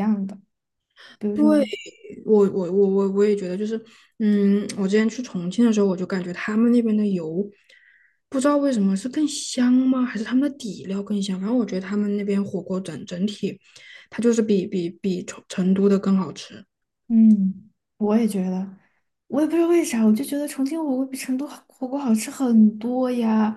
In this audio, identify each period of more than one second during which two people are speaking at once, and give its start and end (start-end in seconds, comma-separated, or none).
none